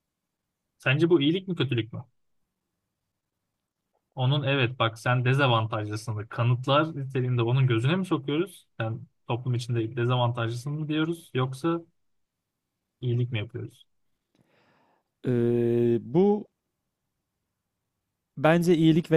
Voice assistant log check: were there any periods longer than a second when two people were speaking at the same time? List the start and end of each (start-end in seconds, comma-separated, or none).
none